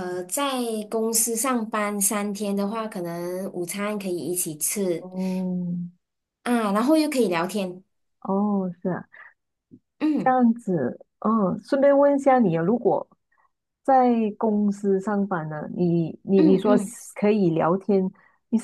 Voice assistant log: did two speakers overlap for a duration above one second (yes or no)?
no